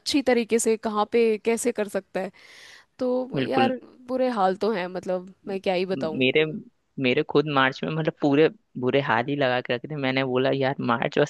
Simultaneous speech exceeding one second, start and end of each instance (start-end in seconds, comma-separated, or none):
none